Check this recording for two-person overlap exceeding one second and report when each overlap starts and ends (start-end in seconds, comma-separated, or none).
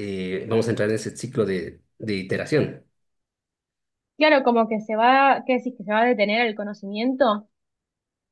none